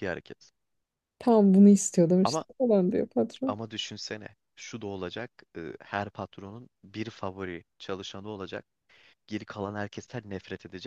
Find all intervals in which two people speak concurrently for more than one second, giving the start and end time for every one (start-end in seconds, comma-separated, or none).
none